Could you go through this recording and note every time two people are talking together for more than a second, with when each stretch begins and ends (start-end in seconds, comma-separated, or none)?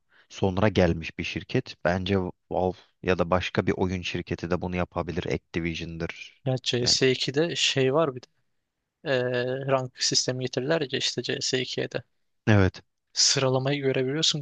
none